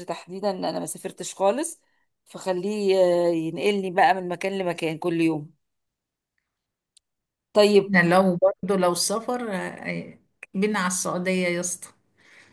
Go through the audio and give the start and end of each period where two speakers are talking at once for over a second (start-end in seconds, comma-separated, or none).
none